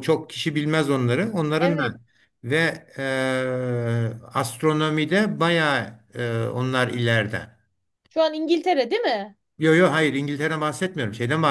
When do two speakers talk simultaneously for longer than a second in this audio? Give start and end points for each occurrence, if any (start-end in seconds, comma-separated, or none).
none